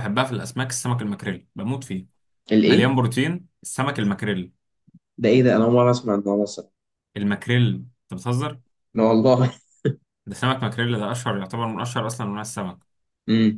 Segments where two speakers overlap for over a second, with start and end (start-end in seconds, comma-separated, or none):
none